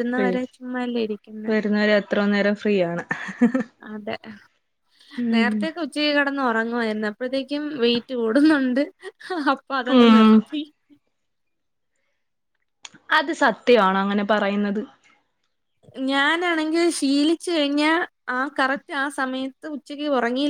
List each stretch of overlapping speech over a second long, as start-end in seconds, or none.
none